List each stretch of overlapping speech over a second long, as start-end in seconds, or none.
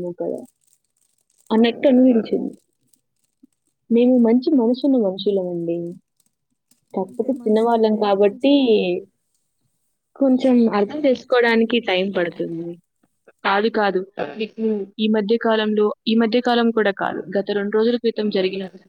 7.1-8.5, 10.3-11.7